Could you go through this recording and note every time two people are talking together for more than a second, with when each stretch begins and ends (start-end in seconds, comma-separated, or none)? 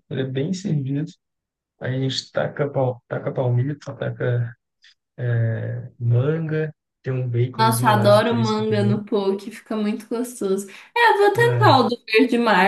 7.5-9.0